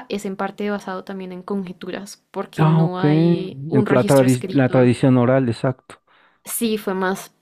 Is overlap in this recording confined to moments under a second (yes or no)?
no